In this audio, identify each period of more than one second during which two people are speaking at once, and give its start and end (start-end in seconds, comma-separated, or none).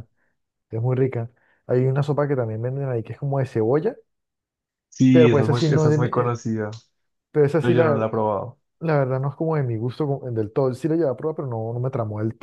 5.1-6.3